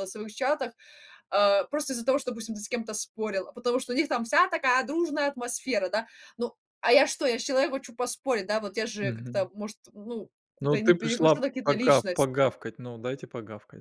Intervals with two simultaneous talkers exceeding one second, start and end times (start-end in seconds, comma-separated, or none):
10.6-12.3